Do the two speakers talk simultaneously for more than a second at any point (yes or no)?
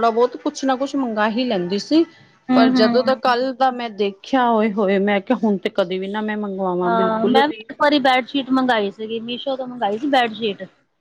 no